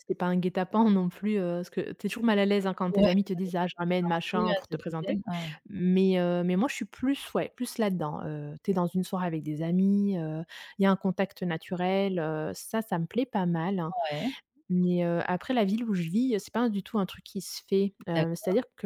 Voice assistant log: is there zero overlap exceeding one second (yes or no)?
no